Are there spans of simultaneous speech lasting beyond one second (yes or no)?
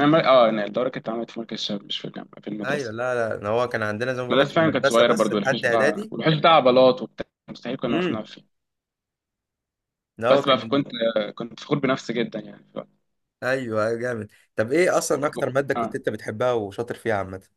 yes